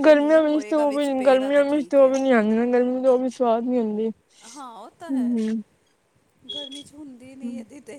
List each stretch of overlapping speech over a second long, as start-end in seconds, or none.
none